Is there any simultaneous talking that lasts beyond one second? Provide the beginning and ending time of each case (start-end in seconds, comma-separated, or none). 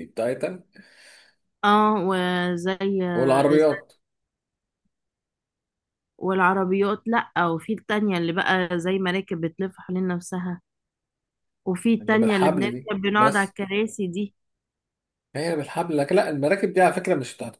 12.0-13.6